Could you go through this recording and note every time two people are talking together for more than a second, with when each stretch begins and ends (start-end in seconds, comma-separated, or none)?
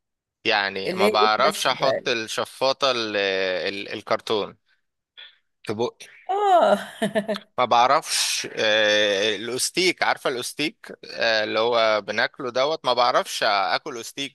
0.8-2.1